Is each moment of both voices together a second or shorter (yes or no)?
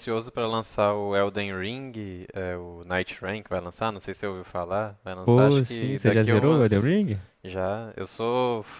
no